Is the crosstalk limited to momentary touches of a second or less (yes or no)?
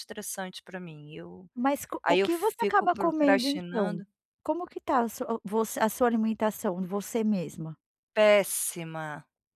no